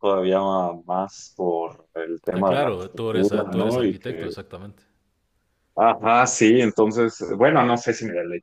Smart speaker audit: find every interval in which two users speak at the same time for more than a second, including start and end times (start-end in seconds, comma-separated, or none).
2.3-4.3